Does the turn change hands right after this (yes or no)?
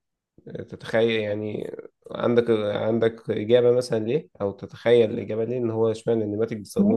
yes